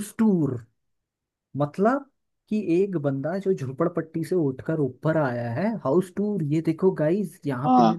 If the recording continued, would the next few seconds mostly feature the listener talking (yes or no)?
no